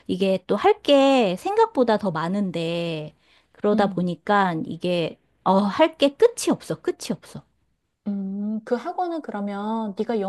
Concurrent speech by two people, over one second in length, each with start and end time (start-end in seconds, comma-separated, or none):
none